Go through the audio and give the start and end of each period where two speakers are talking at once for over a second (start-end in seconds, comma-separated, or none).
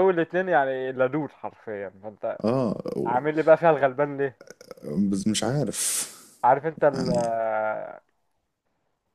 none